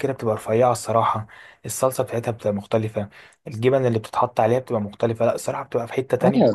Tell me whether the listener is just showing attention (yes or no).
no